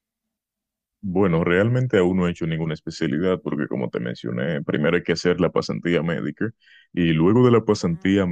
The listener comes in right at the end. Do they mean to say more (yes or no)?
no